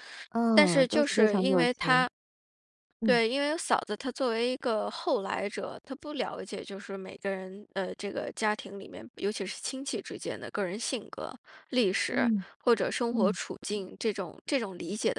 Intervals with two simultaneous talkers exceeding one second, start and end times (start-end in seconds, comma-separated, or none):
0.6-2.1